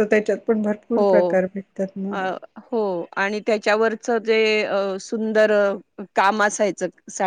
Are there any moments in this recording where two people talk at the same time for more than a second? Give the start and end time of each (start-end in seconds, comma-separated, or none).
none